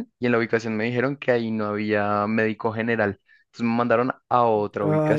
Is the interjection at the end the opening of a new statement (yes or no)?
yes